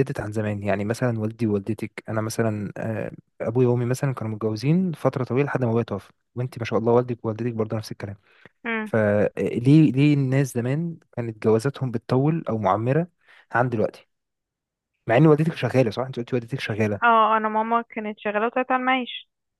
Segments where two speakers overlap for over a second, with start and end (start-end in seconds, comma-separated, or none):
none